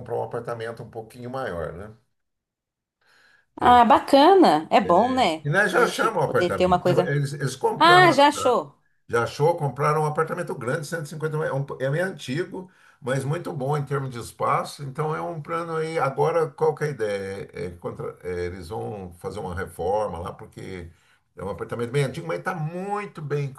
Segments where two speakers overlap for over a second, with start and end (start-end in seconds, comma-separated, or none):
5.4-7.2